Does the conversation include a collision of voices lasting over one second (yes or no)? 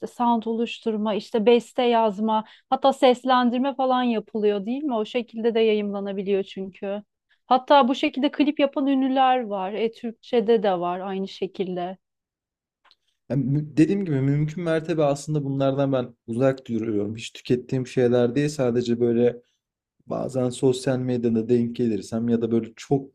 no